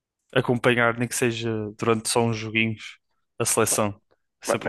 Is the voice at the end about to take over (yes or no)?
yes